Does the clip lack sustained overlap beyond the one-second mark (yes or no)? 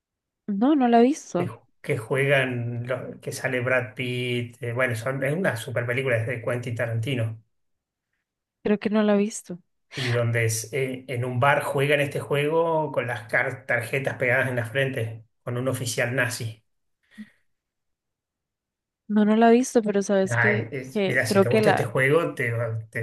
no